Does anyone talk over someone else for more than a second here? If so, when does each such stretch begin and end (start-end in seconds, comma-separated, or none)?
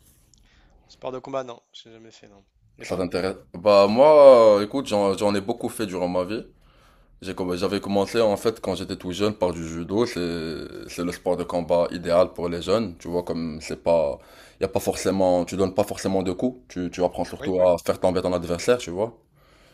none